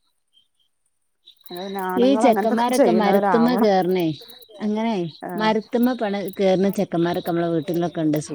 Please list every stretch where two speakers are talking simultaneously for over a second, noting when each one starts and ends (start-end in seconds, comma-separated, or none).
2.0-3.7